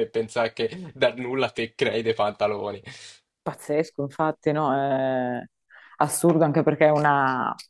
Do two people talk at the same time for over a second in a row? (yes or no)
no